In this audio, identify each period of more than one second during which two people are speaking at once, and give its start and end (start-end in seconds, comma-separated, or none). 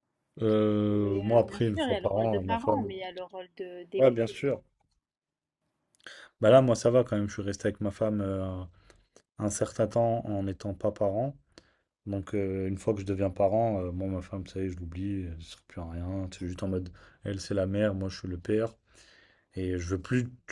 1.0-2.9